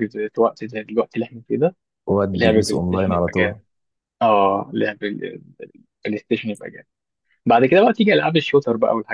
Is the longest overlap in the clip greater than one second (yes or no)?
yes